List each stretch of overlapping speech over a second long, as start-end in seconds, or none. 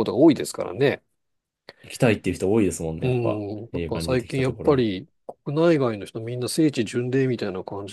3.0-4.9